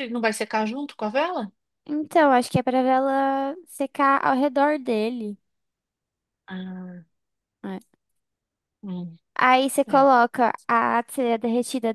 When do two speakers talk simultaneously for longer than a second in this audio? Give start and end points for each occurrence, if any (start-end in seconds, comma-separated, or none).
none